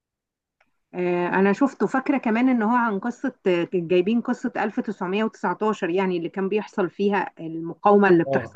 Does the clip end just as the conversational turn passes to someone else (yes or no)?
yes